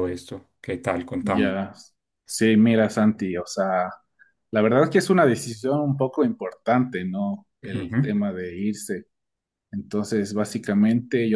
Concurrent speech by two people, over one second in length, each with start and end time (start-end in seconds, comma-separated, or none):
none